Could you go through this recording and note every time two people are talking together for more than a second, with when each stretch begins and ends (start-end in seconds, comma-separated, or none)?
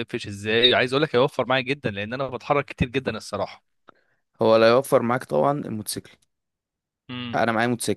none